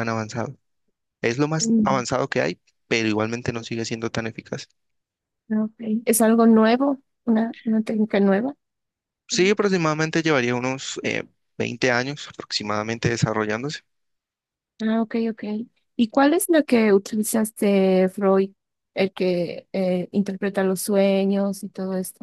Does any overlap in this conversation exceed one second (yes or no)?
no